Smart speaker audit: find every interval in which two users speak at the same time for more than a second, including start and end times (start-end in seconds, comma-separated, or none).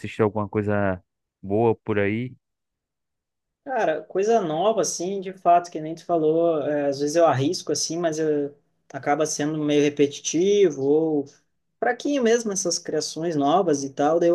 none